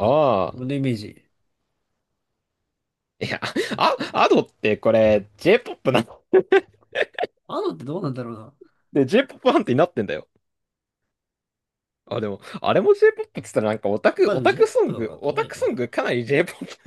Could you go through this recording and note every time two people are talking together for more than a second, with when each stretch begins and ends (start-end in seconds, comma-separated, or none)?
14.2-15.9